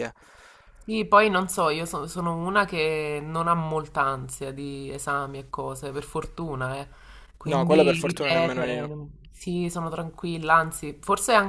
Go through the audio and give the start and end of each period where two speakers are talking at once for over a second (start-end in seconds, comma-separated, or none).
7.4-8.9